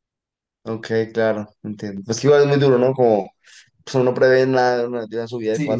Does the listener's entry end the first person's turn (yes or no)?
yes